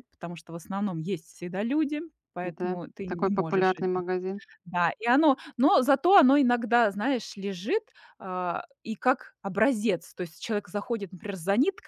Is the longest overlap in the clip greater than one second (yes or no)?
yes